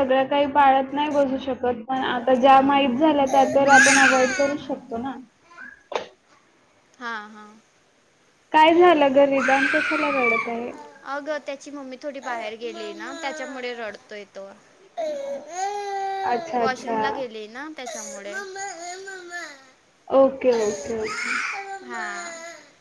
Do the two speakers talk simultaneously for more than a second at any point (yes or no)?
no